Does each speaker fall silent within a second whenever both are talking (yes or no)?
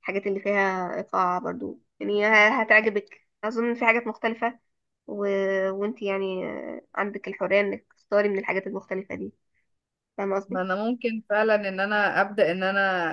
yes